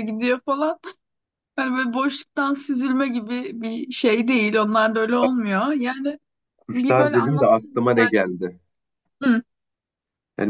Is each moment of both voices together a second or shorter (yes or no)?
no